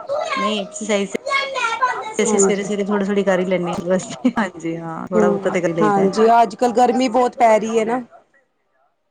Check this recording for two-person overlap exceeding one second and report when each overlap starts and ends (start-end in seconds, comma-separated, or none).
none